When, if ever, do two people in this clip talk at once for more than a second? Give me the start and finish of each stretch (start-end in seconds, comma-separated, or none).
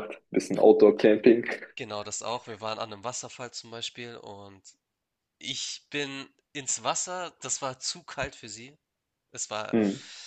none